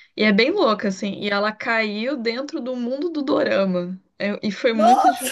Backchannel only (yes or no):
yes